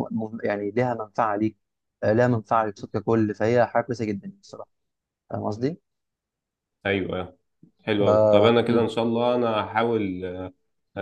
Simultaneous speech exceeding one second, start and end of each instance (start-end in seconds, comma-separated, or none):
none